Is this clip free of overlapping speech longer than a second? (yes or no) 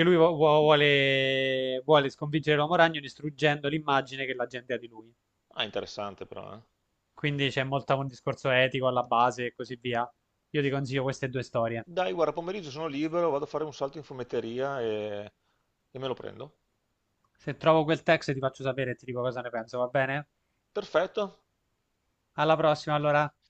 yes